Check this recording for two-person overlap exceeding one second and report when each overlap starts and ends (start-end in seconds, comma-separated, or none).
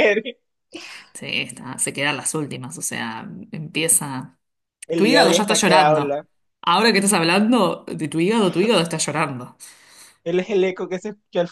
4.9-6.2